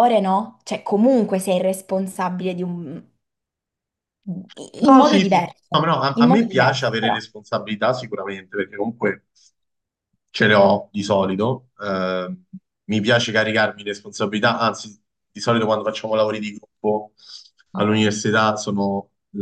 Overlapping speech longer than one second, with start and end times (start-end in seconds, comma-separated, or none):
4.8-7.2